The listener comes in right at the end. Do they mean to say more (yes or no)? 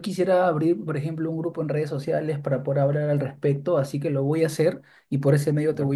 no